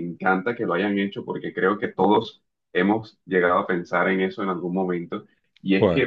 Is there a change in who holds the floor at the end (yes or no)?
no